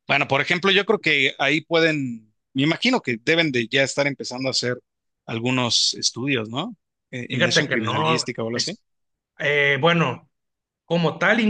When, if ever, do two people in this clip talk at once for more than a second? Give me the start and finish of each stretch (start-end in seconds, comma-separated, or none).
7.3-8.8